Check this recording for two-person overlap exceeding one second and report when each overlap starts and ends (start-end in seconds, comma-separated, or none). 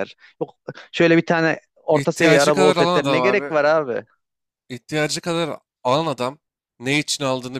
1.9-3.5